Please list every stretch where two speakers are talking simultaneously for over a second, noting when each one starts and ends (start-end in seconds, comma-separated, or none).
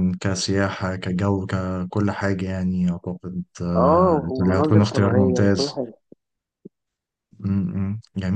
3.8-5.8